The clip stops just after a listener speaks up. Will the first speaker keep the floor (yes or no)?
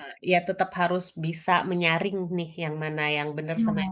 yes